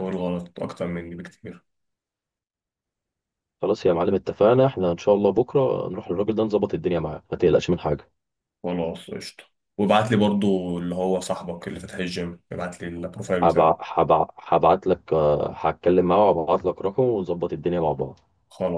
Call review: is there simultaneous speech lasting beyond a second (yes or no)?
no